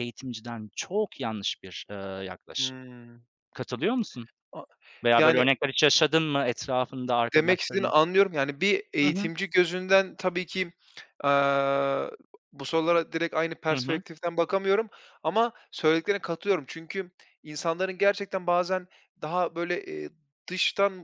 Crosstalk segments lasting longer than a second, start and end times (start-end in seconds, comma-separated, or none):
none